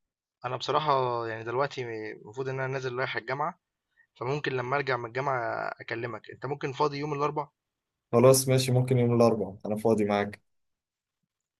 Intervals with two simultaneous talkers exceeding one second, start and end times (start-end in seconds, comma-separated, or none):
none